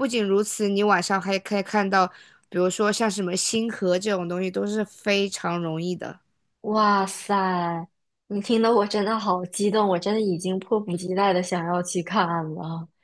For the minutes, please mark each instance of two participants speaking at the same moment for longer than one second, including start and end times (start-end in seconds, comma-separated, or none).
none